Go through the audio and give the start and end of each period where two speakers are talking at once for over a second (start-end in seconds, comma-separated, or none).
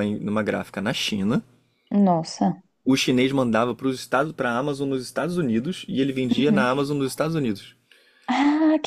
none